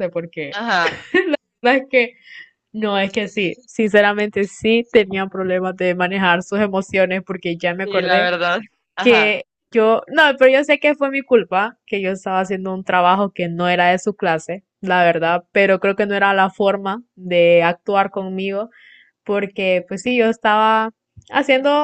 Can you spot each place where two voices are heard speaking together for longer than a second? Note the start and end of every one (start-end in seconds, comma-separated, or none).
none